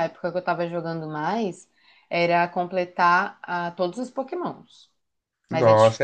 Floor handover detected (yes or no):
yes